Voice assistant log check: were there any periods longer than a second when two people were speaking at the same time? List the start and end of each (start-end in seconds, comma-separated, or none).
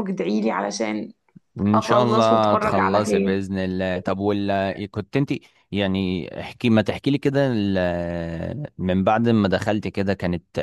1.7-3.4